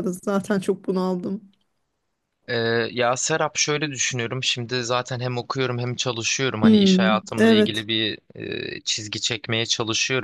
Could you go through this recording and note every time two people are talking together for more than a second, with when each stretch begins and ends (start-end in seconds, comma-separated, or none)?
6.6-7.9